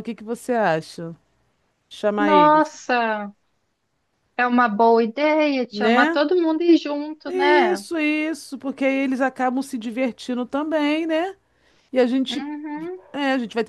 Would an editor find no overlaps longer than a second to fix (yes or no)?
yes